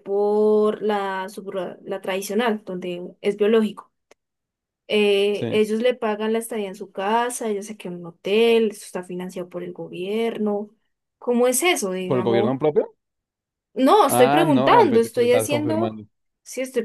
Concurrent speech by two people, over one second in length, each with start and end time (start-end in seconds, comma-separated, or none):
14.1-16.0